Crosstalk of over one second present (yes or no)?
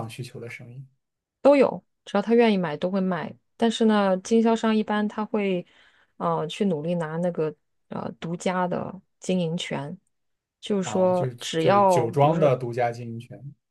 yes